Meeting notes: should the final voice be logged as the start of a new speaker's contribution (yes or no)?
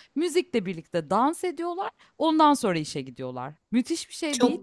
yes